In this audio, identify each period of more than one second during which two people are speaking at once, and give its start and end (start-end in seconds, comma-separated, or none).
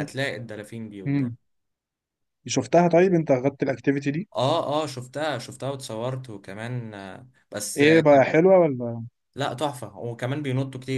none